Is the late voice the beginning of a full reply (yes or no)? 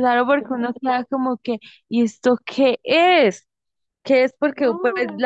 no